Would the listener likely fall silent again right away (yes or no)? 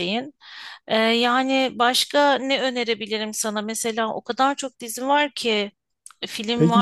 no